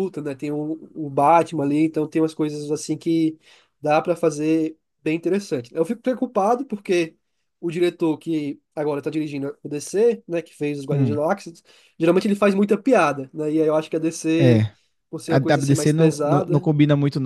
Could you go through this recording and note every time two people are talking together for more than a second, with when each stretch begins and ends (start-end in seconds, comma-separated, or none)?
15.3-16.7